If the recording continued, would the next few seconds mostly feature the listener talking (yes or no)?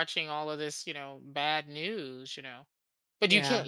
no